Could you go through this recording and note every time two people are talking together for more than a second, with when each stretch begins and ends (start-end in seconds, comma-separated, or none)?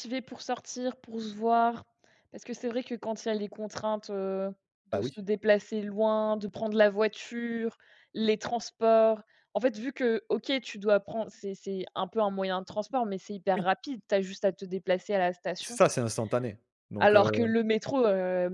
none